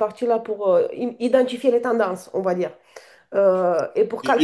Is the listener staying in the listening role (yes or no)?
no